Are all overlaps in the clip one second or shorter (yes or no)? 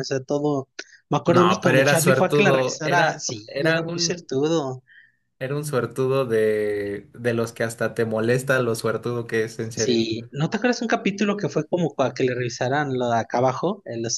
no